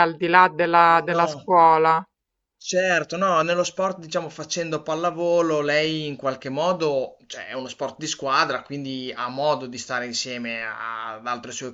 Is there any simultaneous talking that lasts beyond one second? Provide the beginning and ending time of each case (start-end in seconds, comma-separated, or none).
none